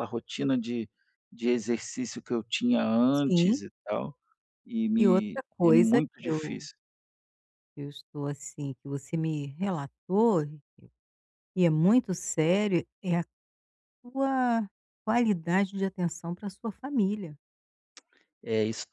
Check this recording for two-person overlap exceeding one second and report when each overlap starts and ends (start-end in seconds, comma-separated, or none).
5.0-6.7